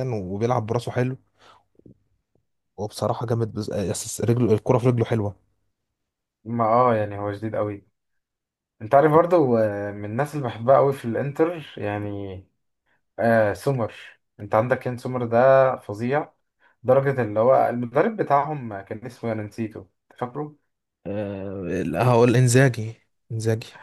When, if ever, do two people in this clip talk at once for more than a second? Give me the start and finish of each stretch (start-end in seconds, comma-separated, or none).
none